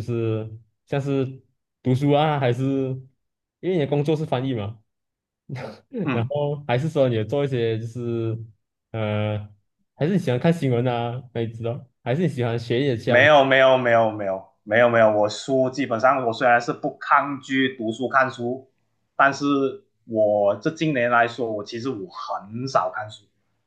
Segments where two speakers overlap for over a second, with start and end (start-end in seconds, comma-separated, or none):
none